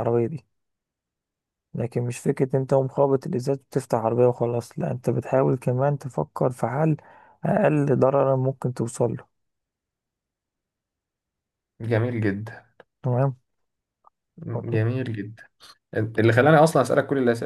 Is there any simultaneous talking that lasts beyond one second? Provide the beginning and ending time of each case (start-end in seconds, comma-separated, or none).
none